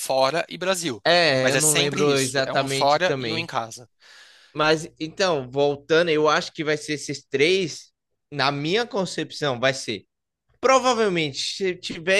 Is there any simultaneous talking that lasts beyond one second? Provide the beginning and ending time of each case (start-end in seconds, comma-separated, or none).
1.4-3.5